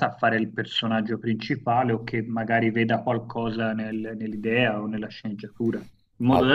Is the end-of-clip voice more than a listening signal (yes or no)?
no